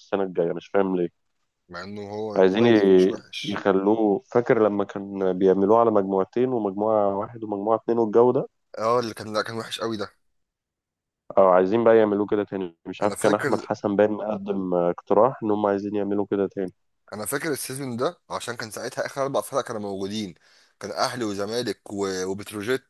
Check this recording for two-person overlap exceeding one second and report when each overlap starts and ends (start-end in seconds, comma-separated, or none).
2.4-3.6